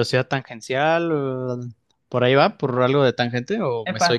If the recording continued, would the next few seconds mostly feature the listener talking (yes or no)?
yes